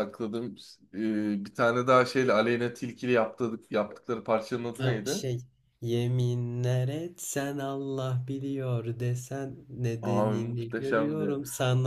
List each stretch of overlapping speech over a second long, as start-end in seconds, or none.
10.0-11.4